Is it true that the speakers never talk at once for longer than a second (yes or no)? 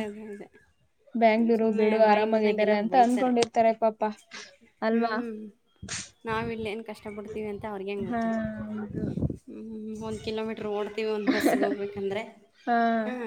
no